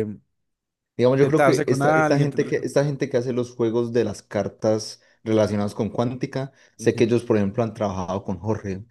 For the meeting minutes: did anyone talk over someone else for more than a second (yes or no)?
yes